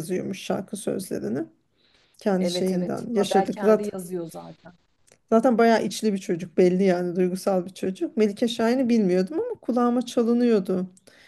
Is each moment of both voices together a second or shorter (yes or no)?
no